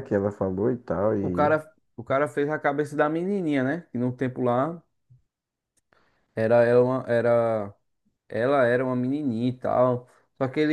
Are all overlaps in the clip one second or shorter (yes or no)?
yes